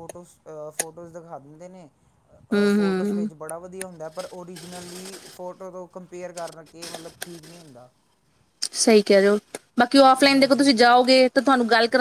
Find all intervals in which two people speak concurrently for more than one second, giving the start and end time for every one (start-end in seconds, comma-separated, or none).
none